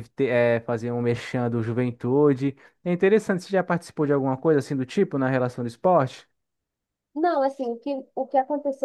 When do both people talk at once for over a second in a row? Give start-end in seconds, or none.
none